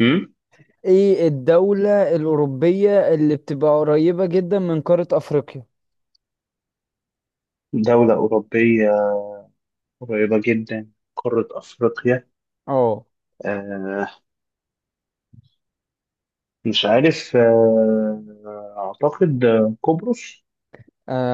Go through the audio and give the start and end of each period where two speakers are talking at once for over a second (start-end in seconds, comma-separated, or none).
none